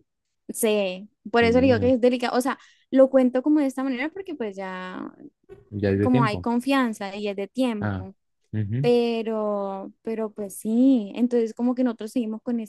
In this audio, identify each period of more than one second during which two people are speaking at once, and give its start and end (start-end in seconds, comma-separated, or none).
none